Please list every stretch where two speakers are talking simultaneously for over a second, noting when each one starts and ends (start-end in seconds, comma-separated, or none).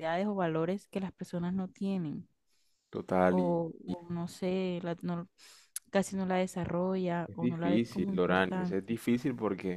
7.2-8.8